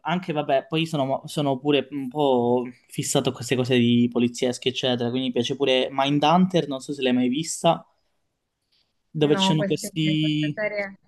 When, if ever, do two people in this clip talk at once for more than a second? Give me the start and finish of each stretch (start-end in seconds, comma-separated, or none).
9.2-10.6